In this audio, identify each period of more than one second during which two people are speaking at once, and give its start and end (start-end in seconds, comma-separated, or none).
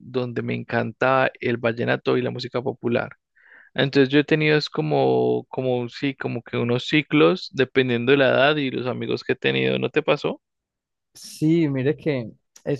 none